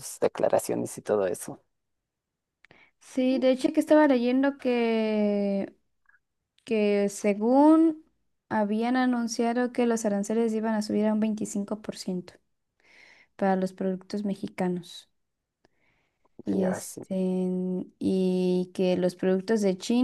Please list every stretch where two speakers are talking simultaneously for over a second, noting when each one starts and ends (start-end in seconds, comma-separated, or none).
none